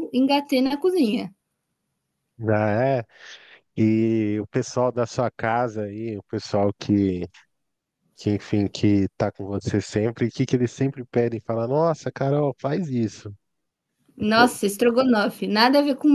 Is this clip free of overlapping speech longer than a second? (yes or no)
yes